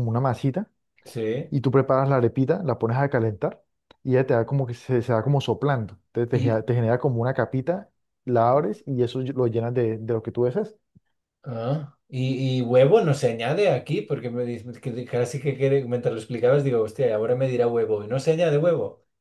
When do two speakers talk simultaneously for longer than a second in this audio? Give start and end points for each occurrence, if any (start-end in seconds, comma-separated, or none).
none